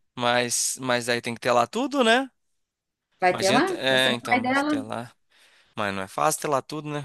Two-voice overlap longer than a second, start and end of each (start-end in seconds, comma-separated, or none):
3.3-4.8